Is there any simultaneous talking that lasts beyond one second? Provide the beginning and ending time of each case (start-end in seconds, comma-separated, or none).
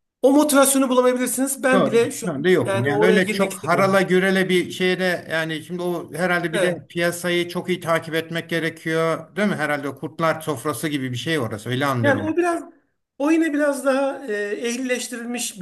1.7-4.0